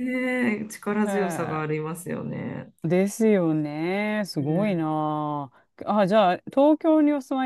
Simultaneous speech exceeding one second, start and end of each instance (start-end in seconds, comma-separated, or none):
none